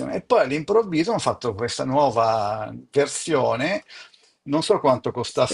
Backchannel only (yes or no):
yes